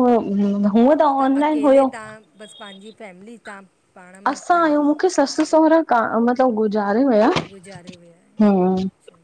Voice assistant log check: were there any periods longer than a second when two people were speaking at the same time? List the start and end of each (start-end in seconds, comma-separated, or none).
7.5-8.7